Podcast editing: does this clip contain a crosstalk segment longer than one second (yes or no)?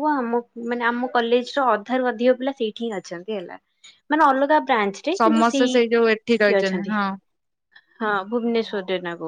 yes